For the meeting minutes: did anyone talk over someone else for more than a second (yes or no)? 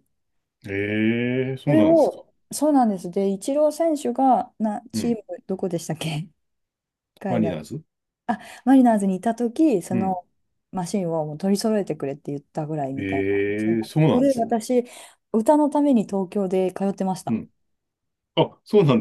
yes